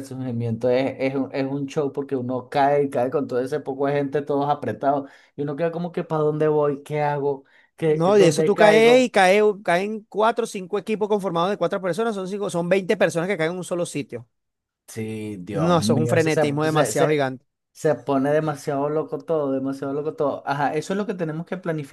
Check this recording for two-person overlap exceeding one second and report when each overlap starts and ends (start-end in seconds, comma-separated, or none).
7.9-9.1, 15.5-17.1